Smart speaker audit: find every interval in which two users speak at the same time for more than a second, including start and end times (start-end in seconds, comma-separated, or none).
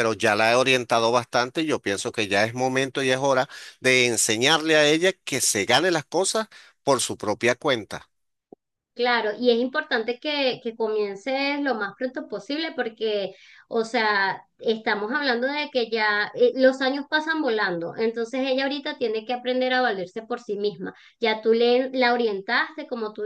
none